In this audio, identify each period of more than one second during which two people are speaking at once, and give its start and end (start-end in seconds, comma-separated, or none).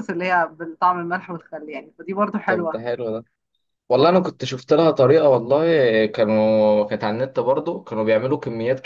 none